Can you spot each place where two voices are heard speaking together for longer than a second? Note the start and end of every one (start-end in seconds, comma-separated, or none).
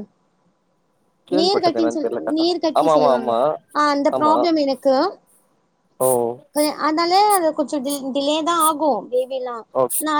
1.4-3.3